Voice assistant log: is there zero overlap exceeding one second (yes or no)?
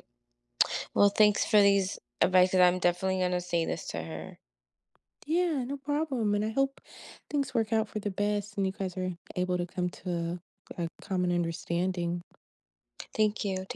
yes